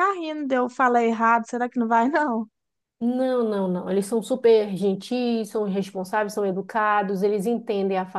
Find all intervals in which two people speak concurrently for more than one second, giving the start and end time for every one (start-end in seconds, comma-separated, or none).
none